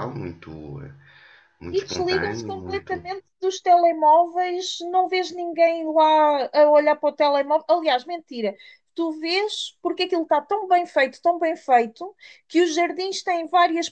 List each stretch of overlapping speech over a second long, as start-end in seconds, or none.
1.7-2.9